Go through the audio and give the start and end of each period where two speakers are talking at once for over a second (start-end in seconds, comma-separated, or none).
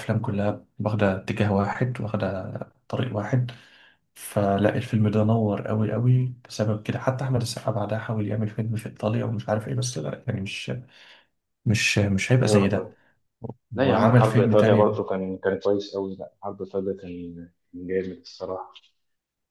13.8-15.0